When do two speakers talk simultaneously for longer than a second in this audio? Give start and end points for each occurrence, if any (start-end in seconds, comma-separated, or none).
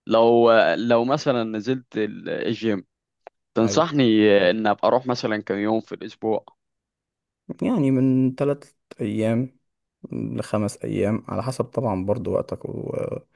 none